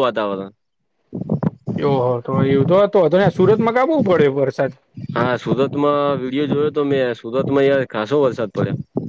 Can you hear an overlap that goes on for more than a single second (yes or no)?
no